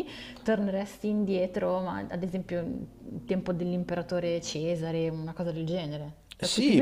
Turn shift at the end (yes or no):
yes